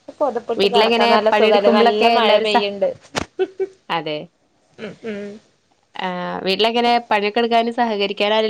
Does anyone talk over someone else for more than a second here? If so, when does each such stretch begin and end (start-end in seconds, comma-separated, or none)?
0.6-2.6